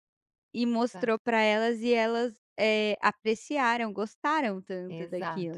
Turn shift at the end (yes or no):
yes